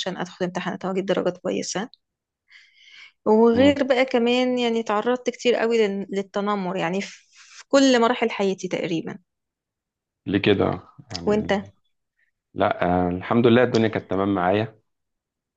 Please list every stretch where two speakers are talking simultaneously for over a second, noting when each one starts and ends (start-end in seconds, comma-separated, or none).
none